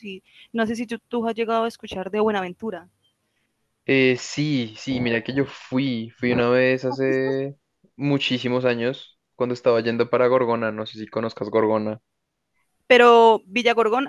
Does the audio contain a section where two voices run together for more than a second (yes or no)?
no